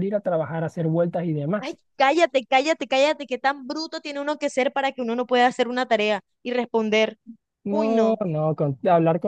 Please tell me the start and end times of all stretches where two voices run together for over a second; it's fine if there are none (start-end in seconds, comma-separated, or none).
none